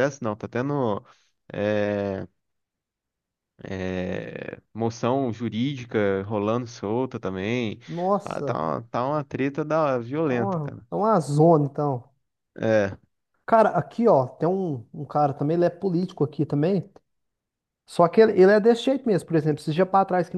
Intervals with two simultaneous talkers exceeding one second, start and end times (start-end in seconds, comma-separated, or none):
none